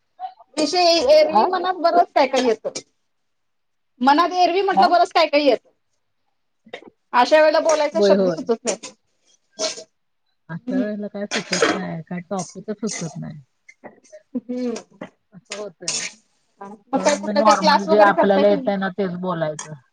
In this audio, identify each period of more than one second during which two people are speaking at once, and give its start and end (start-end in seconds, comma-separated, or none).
16.9-18.7